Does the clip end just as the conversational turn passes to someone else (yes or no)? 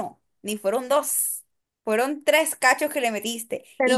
no